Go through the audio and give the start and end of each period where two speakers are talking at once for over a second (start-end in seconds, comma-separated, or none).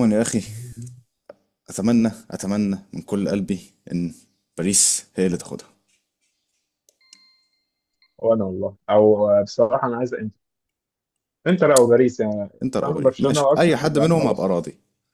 12.6-14.5